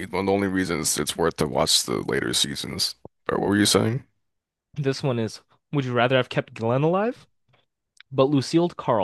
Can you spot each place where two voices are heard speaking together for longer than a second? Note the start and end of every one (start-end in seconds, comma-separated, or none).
none